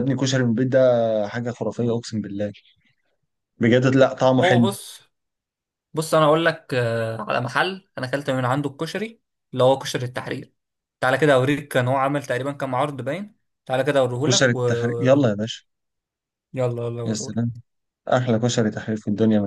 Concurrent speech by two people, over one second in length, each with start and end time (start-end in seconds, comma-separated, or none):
none